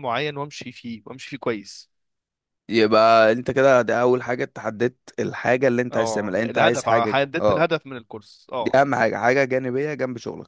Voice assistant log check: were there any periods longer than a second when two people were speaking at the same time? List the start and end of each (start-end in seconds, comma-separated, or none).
5.9-7.7